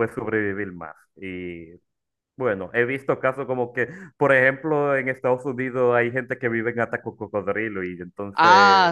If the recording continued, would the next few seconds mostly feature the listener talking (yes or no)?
yes